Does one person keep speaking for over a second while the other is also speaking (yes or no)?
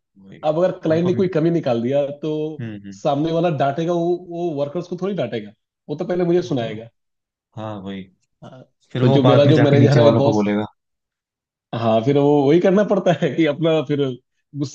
yes